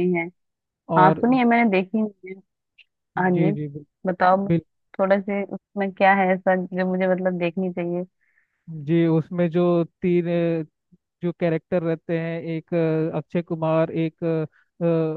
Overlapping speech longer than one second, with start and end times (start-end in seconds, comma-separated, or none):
none